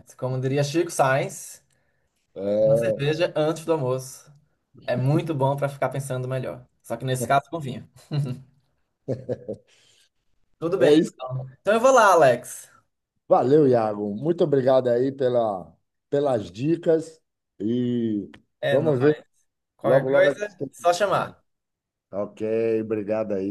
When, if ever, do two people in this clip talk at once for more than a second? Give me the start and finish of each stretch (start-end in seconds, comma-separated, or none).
19.8-21.3